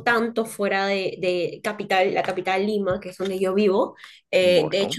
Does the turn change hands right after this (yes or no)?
no